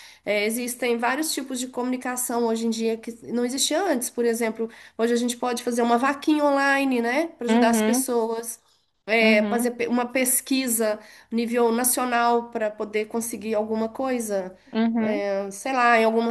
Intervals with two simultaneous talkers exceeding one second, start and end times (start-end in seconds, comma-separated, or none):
none